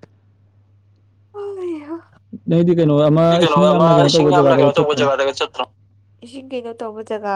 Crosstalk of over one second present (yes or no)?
yes